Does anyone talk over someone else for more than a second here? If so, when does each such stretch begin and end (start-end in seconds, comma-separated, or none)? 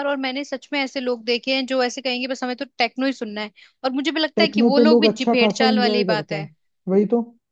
4.4-6.5